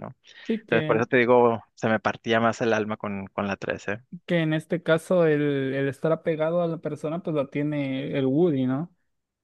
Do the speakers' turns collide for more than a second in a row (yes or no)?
no